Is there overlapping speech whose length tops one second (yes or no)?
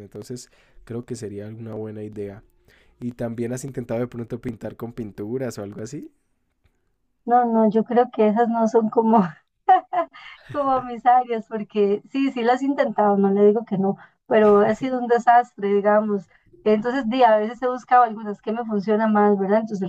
no